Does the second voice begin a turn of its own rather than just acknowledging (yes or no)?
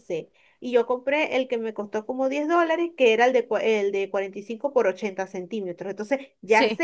no